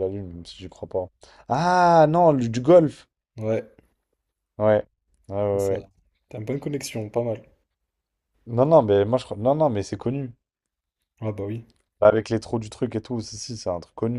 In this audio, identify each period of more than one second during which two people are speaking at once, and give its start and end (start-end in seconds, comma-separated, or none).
none